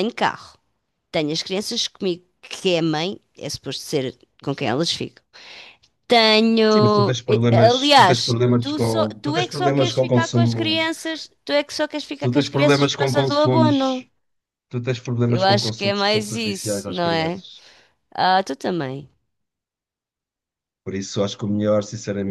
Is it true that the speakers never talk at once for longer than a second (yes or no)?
no